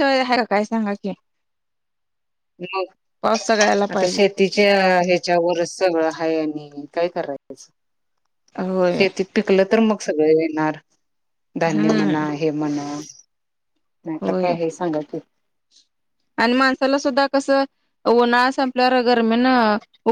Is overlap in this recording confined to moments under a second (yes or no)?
yes